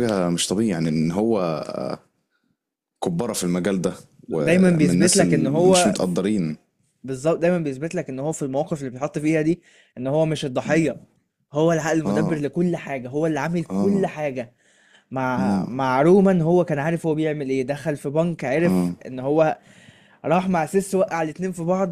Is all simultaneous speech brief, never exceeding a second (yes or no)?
no